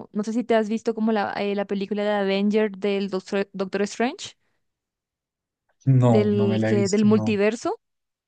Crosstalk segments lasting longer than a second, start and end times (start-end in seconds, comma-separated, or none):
6.1-7.4